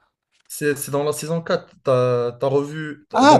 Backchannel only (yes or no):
no